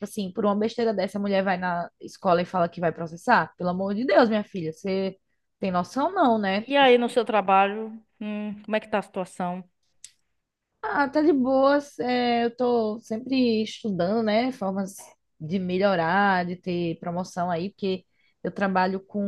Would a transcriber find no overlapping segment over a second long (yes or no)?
yes